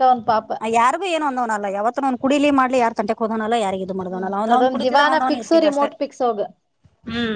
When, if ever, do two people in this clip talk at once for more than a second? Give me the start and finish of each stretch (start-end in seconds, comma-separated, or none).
4.1-5.9